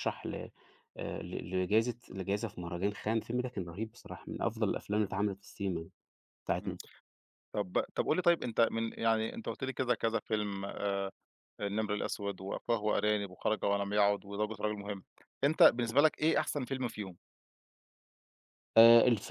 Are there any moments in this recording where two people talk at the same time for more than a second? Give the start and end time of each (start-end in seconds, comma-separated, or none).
none